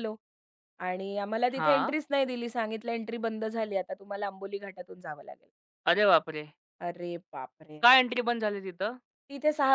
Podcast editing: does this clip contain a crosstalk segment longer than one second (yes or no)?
no